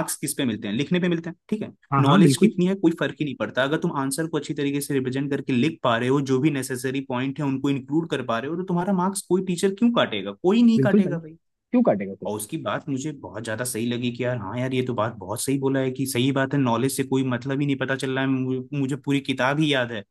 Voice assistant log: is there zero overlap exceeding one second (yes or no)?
yes